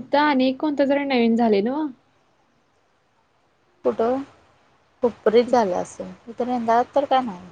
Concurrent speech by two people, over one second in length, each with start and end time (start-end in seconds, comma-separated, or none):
none